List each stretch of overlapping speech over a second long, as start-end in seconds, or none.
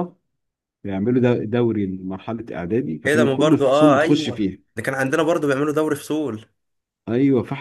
3.1-4.6